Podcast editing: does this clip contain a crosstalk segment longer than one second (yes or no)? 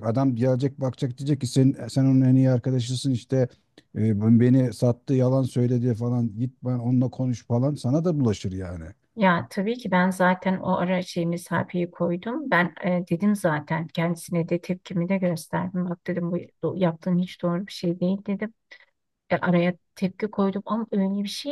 no